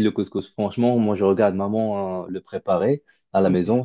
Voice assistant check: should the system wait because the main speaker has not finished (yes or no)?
yes